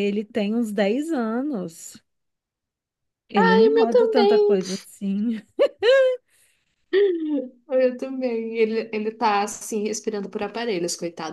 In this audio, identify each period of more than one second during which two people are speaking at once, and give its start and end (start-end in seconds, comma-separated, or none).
3.3-4.6